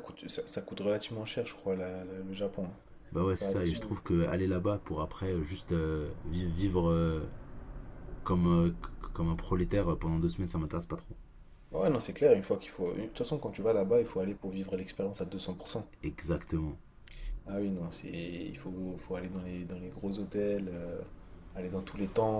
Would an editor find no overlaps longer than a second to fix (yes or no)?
yes